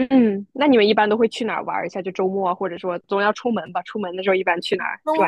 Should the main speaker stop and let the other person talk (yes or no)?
yes